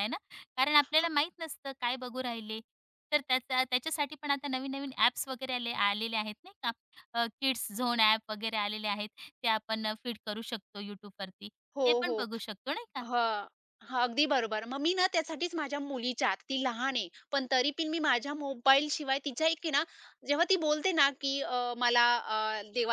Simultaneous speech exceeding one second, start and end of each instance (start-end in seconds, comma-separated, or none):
none